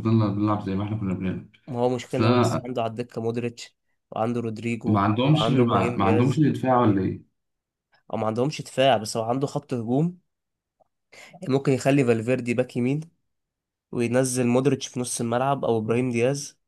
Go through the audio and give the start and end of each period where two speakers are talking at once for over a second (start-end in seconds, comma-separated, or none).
4.8-6.5